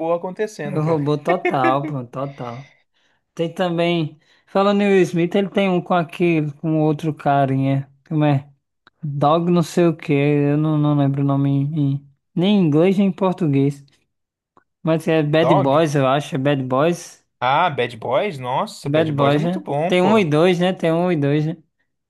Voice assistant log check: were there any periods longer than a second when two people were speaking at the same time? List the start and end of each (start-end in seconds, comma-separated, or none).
18.9-20.3